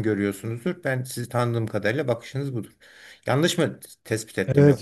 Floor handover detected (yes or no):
yes